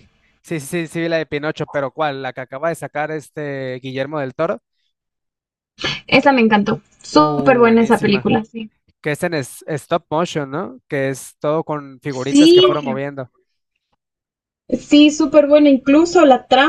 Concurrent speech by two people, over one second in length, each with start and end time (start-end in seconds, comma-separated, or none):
7.1-8.3